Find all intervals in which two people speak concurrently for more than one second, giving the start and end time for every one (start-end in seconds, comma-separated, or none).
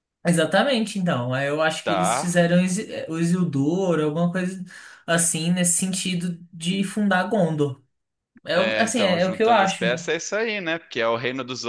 8.5-10.1